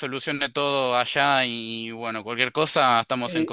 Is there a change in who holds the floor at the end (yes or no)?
yes